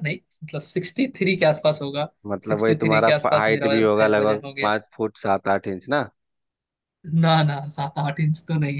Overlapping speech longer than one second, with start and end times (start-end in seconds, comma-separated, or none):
2.5-4.7